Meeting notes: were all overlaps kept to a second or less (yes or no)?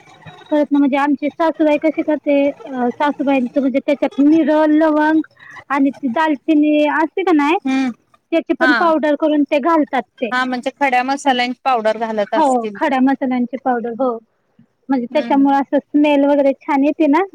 yes